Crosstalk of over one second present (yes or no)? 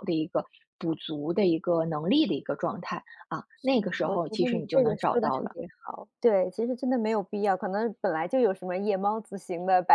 yes